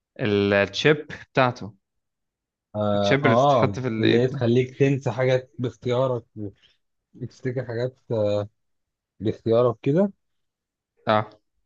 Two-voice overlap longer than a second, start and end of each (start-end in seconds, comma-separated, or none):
3.0-4.4